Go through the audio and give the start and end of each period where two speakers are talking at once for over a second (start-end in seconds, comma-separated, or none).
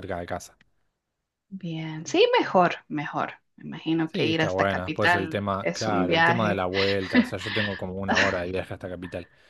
4.1-6.7